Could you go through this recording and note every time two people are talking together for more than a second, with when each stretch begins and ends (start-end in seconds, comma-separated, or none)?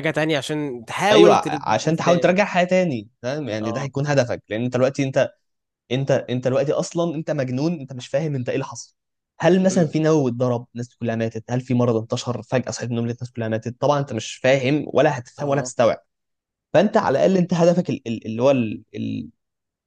1.1-2.4